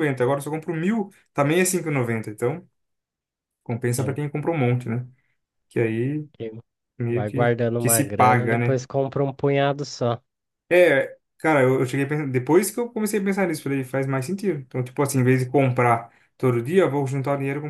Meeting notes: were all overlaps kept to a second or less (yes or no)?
no